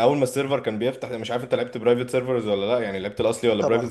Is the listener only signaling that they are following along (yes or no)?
yes